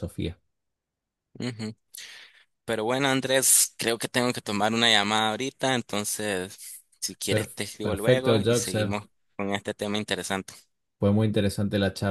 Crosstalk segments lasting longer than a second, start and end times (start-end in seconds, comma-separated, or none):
7.3-9.0